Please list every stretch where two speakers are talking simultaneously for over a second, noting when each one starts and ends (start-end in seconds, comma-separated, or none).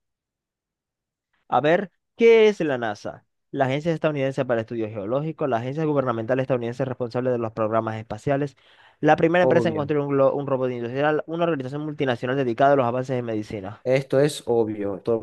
none